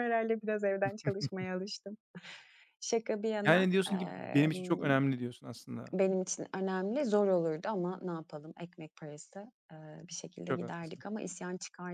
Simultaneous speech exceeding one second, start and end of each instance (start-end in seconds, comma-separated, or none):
3.5-4.9